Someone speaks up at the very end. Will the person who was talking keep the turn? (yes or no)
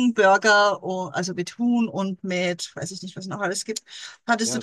yes